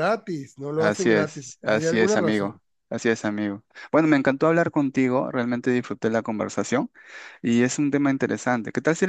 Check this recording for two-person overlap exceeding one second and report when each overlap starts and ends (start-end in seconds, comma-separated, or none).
0.8-2.6